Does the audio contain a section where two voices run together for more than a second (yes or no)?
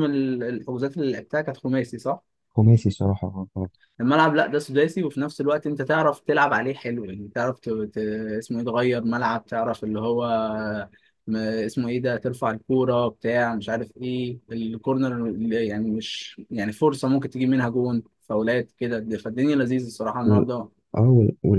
no